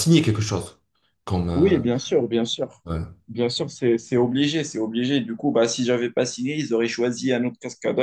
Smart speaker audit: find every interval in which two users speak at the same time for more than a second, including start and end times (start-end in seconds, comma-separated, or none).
none